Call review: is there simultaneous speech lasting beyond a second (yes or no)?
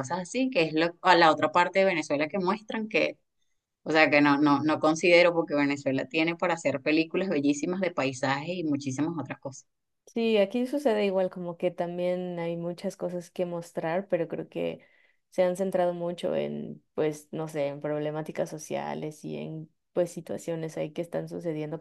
no